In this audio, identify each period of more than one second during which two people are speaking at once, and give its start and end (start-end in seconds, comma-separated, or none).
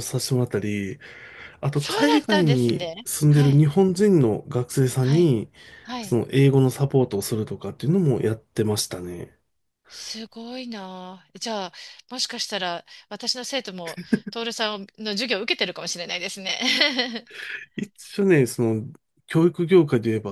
1.7-3.6